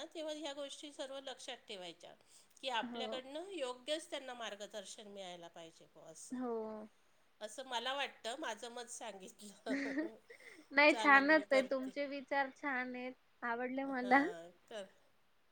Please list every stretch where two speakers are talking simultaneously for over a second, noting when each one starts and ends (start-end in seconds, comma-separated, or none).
none